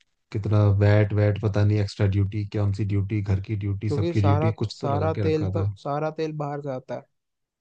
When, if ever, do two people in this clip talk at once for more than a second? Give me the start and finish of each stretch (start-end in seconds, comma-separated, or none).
3.9-5.7